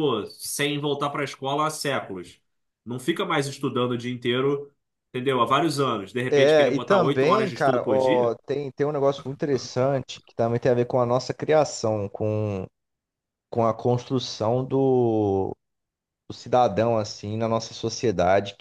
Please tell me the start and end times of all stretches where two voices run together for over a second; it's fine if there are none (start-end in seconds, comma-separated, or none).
6.3-8.4